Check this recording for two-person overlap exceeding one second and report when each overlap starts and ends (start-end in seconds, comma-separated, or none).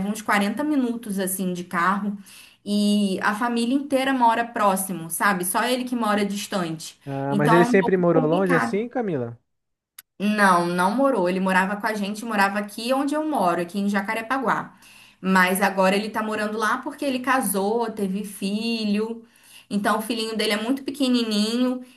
7.1-8.8